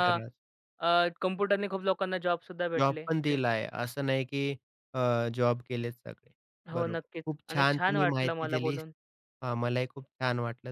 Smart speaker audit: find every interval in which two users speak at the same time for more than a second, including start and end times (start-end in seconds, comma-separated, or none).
6.7-8.8